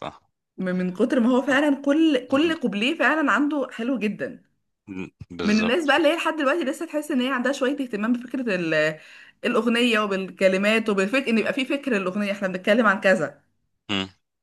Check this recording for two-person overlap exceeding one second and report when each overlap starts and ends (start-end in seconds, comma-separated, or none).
none